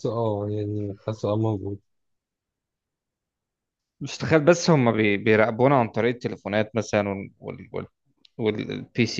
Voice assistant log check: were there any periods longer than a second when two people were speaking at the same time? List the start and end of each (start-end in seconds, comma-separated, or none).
none